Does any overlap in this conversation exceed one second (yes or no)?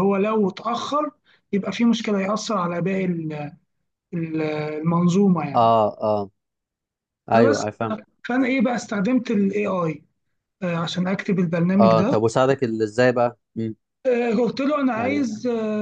no